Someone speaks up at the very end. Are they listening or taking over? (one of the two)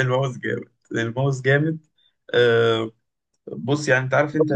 taking over